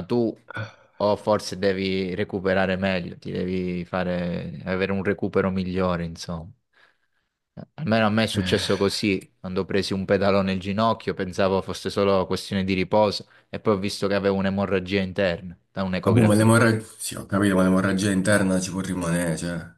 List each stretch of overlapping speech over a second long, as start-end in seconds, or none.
none